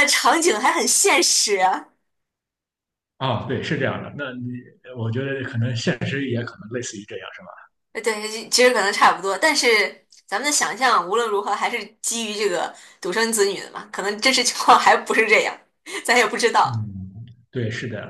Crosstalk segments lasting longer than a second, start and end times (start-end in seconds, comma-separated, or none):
none